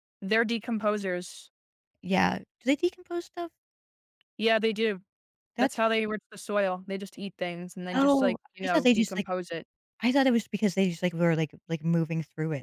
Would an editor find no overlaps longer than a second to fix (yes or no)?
no